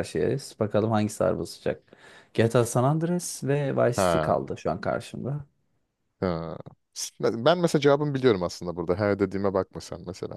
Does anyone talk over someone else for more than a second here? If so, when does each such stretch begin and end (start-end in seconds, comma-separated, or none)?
none